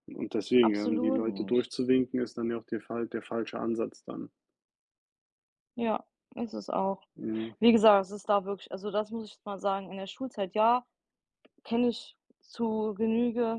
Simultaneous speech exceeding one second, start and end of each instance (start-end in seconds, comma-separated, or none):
0.6-1.8